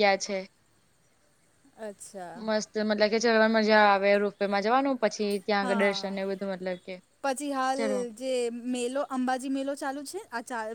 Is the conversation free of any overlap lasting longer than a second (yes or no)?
yes